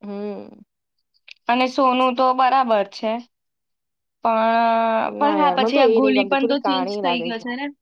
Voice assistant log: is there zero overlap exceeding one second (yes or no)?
no